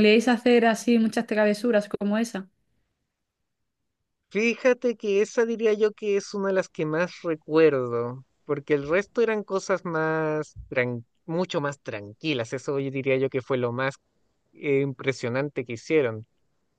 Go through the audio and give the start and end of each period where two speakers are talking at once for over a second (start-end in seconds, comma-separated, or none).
none